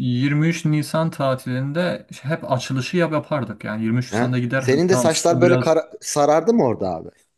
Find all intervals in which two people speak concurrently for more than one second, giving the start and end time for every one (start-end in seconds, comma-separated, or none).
4.1-5.7